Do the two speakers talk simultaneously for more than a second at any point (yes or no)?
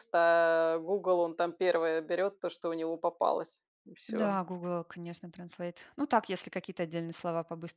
no